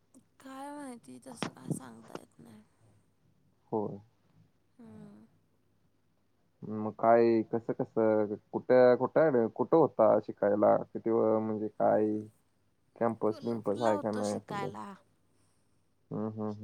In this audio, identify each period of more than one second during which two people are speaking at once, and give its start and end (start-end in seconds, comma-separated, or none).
13.3-14.7